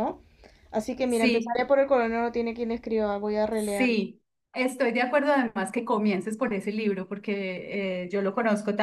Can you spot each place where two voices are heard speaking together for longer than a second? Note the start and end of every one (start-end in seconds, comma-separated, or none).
none